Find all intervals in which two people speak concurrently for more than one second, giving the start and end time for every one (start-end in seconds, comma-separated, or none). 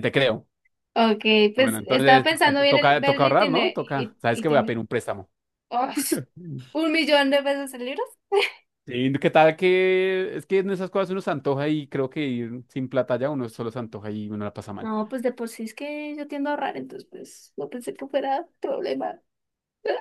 1.6-4.8